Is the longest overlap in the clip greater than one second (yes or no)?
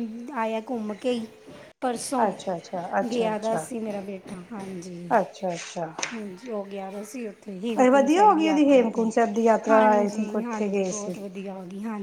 yes